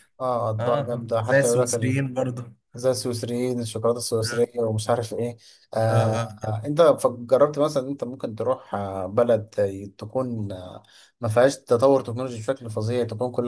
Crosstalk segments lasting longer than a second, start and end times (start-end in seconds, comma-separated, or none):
0.6-2.0